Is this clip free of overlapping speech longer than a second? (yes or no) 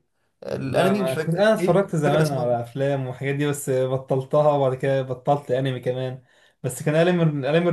no